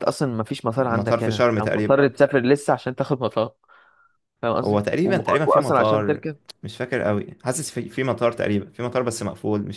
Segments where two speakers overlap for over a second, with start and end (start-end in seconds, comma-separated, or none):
0.8-2.0, 4.6-6.2